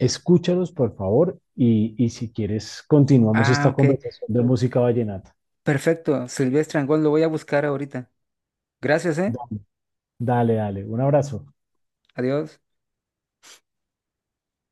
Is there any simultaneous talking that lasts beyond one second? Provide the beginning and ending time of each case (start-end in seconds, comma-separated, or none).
none